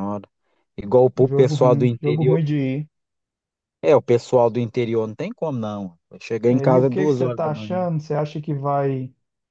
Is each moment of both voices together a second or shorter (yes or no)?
no